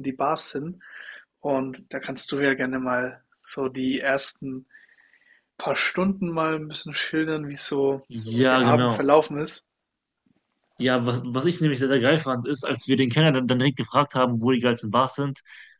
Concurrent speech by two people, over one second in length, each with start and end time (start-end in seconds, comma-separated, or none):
none